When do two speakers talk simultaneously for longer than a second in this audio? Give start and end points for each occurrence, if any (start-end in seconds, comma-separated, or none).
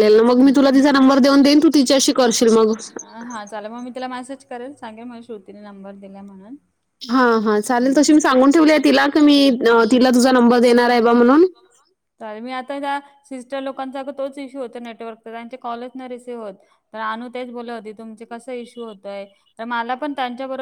none